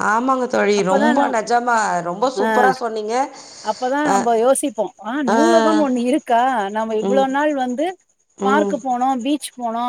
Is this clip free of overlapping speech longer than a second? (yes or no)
yes